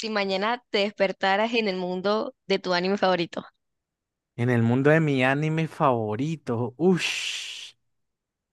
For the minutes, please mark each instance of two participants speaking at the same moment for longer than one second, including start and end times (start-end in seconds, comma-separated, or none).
none